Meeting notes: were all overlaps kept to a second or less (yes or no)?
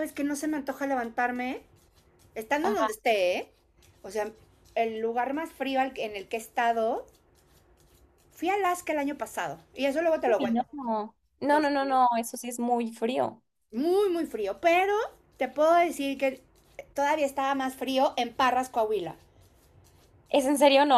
yes